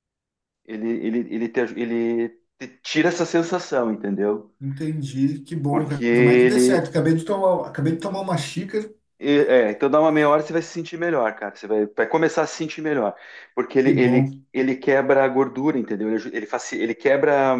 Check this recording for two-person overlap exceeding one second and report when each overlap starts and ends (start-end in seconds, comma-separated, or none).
5.7-6.9